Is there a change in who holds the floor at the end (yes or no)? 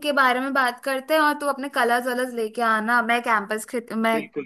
no